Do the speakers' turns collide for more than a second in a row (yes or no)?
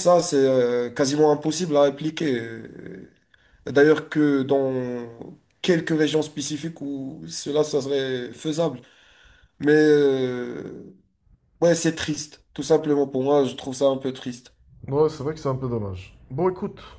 no